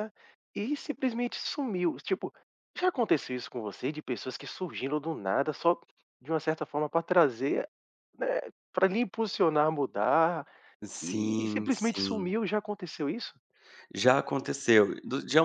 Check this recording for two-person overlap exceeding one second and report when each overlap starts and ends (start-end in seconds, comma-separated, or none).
11.0-12.3